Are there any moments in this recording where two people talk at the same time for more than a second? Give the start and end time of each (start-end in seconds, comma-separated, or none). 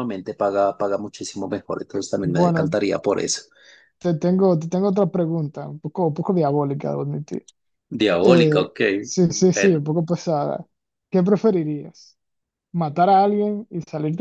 none